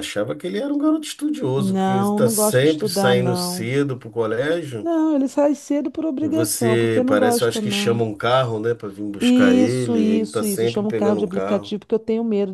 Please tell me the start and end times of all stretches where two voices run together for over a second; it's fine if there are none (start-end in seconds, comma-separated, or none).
1.6-3.7, 6.2-8.0, 9.2-11.7